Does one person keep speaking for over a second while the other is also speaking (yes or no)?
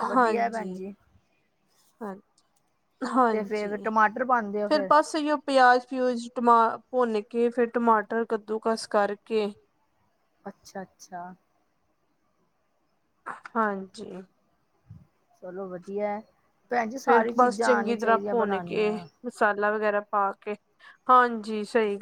yes